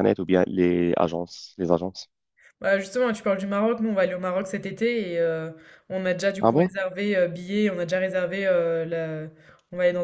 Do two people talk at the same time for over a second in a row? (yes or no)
no